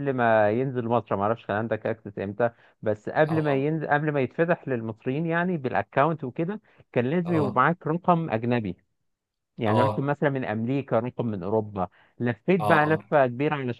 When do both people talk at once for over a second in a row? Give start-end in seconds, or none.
none